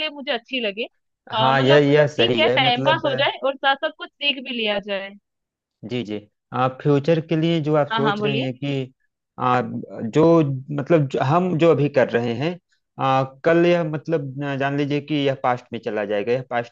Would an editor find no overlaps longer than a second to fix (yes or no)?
no